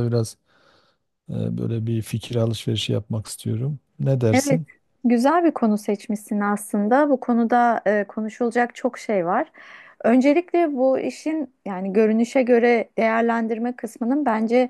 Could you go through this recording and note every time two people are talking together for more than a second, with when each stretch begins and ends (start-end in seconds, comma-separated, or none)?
none